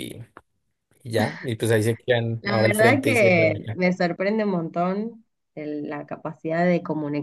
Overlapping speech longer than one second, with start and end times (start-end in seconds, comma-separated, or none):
2.4-3.8